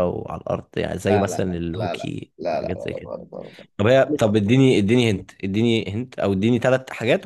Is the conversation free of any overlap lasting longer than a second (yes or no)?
no